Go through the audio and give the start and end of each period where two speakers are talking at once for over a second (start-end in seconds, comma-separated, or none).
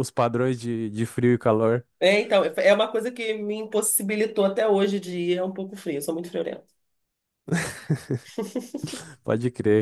none